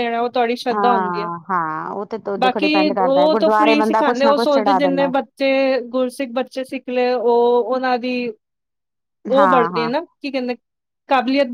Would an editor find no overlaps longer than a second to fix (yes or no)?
no